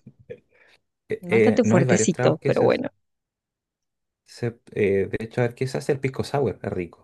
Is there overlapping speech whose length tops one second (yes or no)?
yes